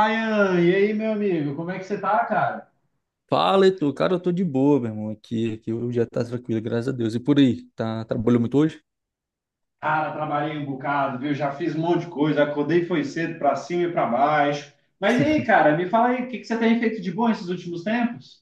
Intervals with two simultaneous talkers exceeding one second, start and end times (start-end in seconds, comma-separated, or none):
none